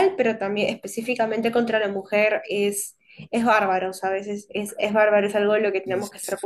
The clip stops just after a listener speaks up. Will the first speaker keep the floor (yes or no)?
yes